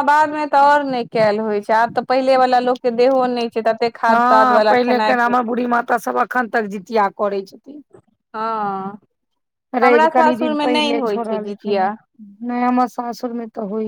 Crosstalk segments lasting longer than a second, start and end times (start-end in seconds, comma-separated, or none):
9.8-11.8